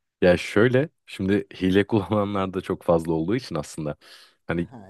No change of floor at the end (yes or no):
yes